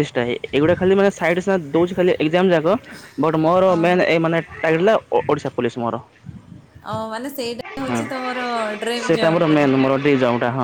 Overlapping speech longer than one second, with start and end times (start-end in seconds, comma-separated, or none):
none